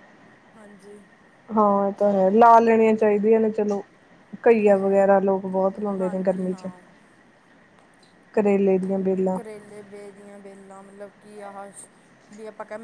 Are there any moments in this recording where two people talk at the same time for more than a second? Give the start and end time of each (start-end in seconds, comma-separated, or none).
4.5-6.7